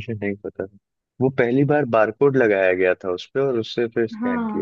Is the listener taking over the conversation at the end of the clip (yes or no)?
yes